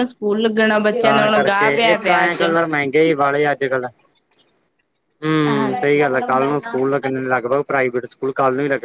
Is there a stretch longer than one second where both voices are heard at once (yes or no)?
no